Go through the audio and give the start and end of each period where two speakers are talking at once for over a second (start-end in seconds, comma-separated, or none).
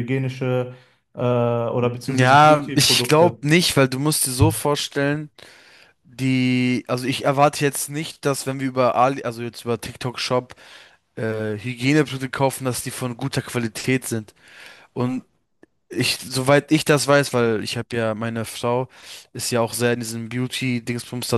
2.1-3.4